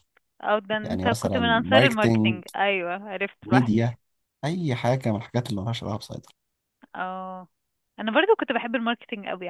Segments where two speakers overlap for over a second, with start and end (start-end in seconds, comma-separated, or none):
0.8-2.4